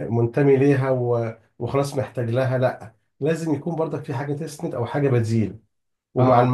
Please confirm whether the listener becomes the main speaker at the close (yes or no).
no